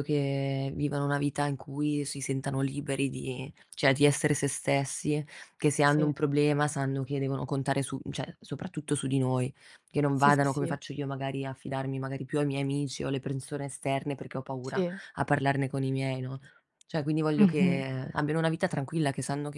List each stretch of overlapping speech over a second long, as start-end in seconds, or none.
none